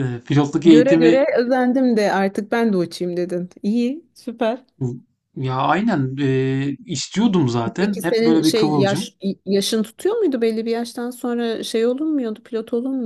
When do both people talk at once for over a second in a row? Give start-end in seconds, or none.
7.8-9.1